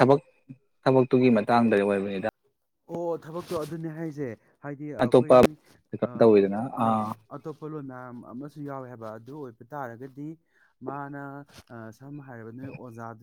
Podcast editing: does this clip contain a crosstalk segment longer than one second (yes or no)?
no